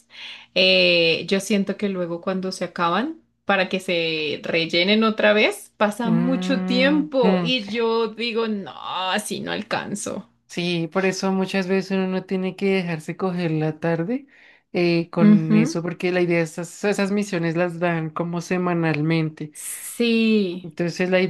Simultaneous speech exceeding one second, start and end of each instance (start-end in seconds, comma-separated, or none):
6.0-7.5